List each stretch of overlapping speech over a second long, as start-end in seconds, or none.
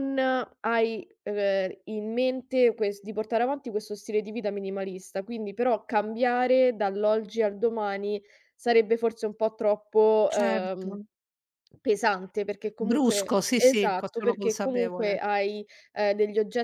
12.8-15.2